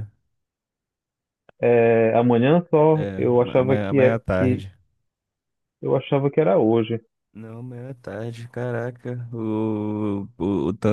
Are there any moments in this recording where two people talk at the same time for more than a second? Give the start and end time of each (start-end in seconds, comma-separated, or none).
2.9-4.6